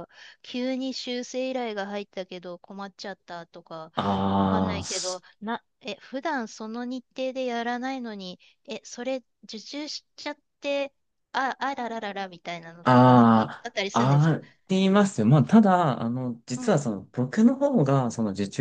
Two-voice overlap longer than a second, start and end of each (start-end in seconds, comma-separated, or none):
12.8-14.3